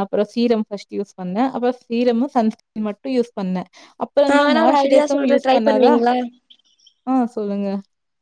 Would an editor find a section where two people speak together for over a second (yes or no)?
yes